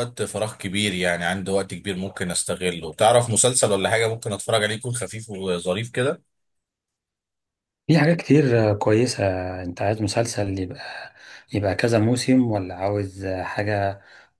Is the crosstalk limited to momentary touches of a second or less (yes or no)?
yes